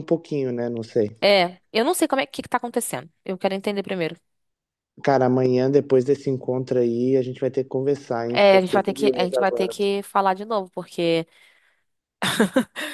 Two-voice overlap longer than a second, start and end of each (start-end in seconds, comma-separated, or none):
8.3-9.8